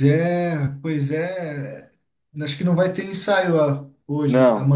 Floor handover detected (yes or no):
yes